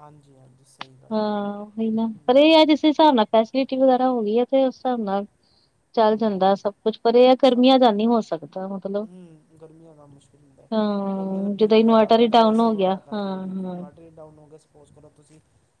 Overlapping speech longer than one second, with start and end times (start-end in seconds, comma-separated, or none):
11.2-13.8